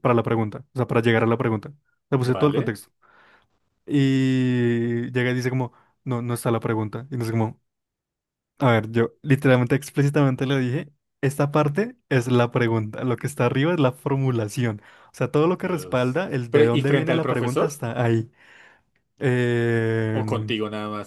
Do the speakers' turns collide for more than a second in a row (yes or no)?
yes